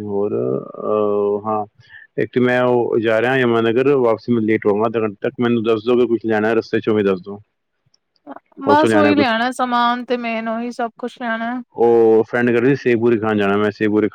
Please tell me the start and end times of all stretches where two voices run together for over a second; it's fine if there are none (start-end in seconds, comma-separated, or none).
none